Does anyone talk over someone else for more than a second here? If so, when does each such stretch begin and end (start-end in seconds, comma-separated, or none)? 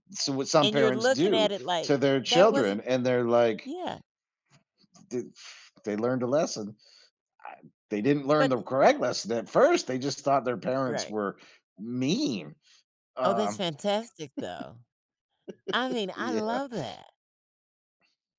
0.6-2.8